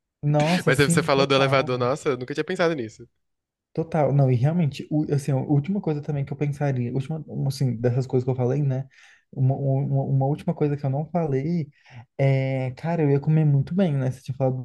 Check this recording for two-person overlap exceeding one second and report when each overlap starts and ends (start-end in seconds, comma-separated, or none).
0.7-1.9